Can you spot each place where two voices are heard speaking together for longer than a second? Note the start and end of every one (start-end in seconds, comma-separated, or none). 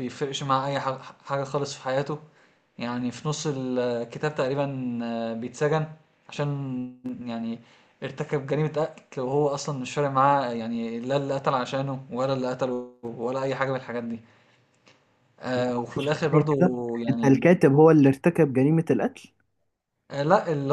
15.5-17.4